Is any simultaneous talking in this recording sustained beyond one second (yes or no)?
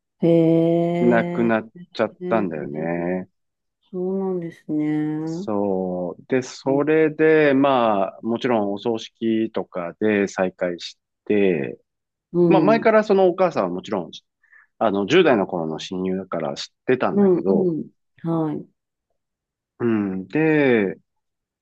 no